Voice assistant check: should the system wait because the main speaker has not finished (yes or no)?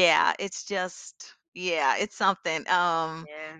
yes